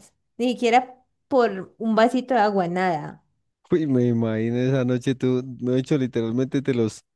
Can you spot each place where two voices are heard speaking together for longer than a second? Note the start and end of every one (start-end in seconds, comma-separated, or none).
none